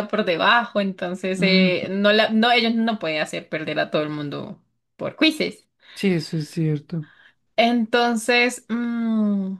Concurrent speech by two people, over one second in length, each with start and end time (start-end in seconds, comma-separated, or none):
none